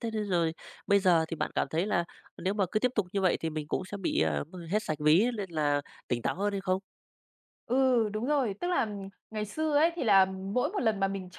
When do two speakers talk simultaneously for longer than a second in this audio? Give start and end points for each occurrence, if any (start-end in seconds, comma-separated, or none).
none